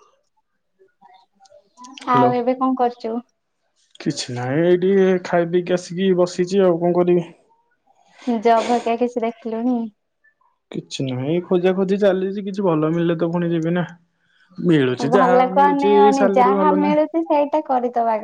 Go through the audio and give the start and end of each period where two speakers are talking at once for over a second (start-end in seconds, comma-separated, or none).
15.0-17.0